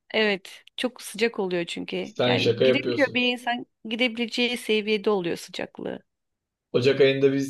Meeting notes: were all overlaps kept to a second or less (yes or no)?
no